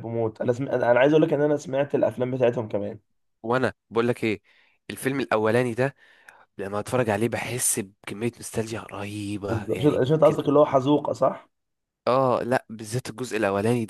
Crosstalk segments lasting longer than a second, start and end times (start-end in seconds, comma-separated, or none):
none